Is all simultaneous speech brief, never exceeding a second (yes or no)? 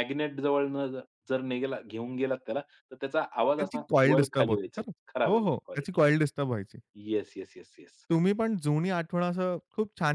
no